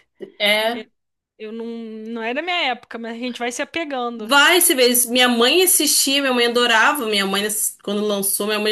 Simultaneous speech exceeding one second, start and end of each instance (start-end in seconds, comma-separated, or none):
none